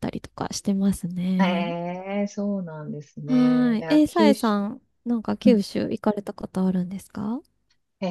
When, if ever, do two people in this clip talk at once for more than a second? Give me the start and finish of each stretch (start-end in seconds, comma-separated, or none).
3.3-4.6